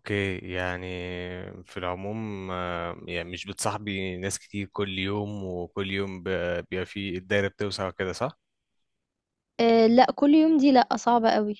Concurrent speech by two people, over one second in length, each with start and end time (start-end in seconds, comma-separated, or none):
none